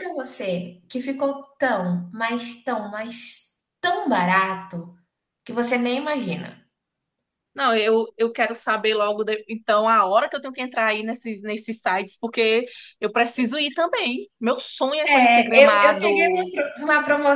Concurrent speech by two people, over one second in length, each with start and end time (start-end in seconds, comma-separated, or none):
15.1-16.5